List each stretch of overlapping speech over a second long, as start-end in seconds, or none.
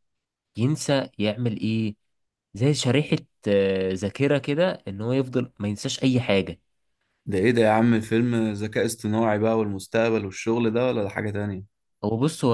none